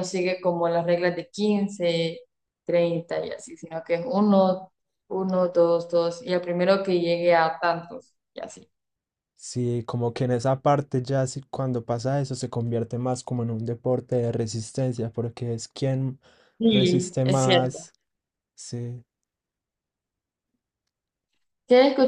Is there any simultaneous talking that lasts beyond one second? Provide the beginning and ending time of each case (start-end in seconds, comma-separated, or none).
16.6-17.9